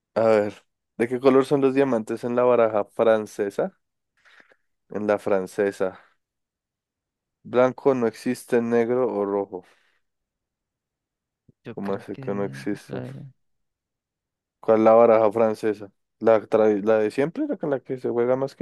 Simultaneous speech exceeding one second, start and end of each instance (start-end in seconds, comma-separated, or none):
11.7-13.0